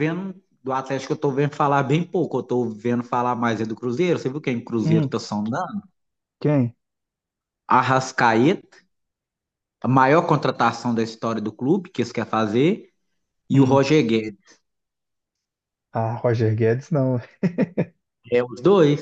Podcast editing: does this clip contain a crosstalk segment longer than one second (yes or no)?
no